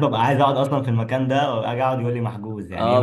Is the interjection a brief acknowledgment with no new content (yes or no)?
no